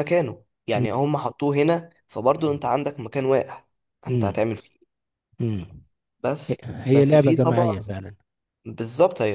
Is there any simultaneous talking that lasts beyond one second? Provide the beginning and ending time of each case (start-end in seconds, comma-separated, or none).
6.5-7.8